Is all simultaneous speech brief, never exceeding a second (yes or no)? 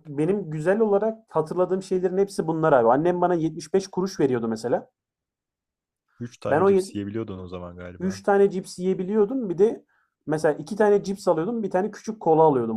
yes